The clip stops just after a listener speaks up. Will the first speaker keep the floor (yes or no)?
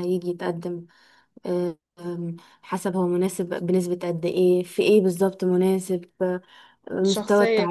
yes